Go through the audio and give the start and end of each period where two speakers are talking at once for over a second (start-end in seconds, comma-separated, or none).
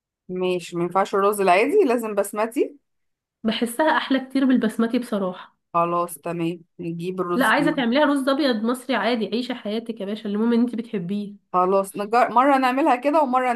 none